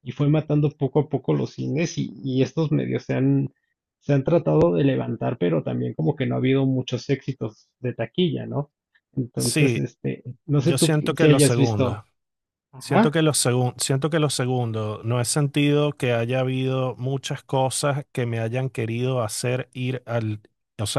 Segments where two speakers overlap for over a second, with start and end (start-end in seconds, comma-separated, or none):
10.6-12.0